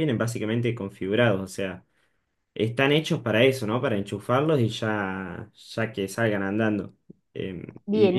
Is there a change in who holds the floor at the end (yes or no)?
yes